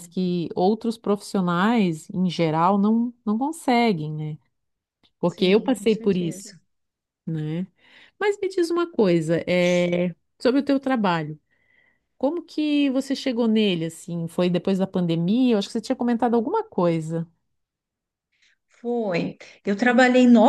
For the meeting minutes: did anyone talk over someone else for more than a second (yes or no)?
yes